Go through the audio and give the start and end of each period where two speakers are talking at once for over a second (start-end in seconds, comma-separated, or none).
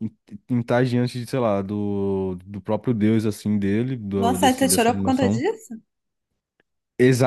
4.2-5.4